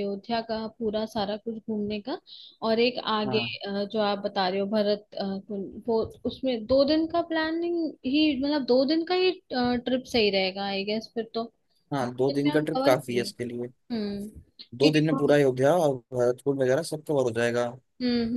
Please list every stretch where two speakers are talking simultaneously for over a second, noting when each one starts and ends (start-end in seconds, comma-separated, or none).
12.0-13.5